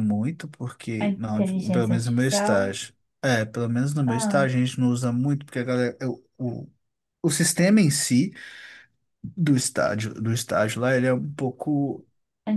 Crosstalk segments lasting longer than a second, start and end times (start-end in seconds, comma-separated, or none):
1.0-2.7